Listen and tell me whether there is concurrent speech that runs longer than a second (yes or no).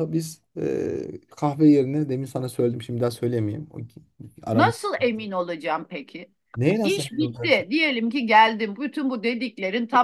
no